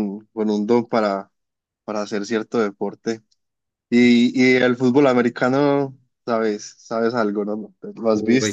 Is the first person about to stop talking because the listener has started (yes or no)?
yes